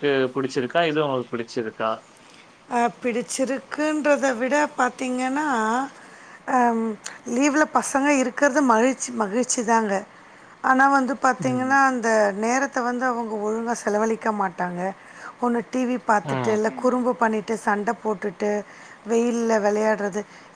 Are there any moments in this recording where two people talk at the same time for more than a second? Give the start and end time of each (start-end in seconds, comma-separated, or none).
none